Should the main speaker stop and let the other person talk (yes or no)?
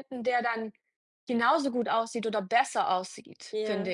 yes